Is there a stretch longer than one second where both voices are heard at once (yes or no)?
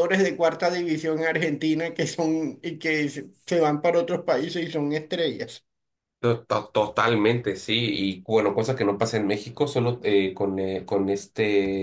no